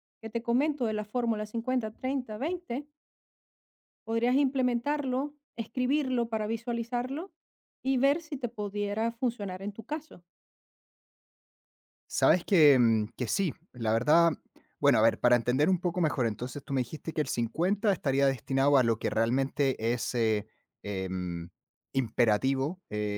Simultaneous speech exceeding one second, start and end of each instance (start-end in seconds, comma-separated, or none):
none